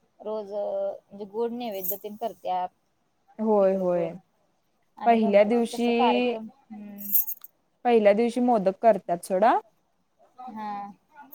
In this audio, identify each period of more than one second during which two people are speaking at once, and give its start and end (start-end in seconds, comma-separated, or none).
5.0-6.3